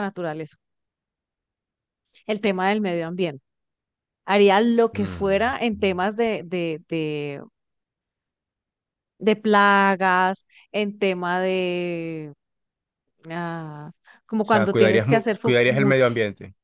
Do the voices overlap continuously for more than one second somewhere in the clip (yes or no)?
yes